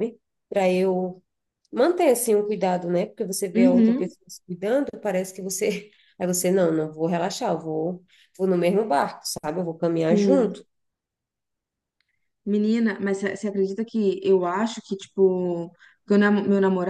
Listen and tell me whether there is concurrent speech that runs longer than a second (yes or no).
no